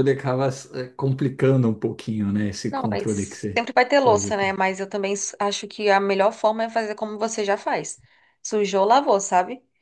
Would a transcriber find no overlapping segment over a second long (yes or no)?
no